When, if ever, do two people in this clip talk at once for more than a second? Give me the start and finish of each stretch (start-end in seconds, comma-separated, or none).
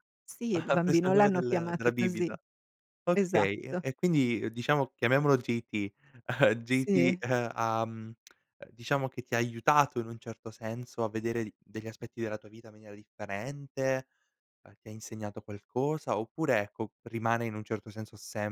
0.5-2.3